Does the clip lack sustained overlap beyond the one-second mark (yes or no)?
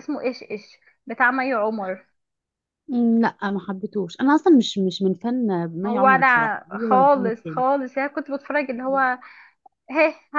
no